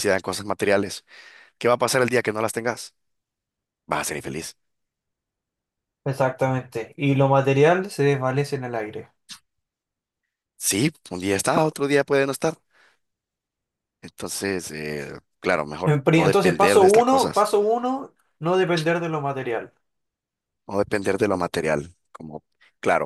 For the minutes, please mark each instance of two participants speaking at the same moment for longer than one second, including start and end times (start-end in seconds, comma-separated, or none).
15.8-17.5